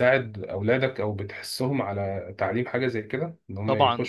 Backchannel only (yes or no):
no